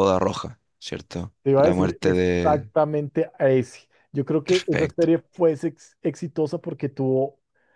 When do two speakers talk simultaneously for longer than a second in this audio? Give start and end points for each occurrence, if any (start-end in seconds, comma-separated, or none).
1.4-2.7